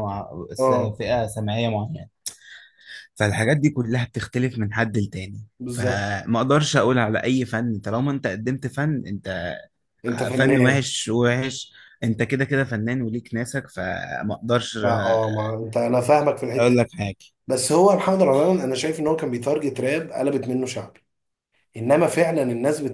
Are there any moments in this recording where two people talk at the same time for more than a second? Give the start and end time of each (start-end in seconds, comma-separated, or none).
none